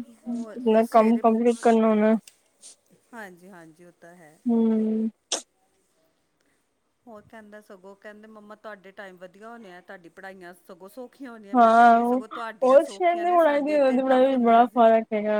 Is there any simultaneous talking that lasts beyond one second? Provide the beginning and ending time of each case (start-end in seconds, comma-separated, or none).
13.5-14.9